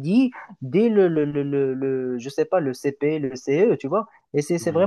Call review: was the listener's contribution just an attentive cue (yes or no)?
yes